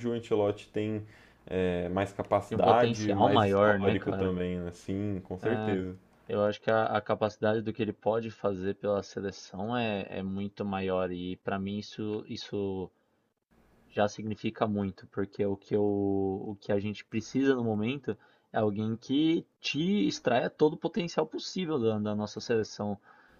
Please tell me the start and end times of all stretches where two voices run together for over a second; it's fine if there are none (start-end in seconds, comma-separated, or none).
2.5-4.4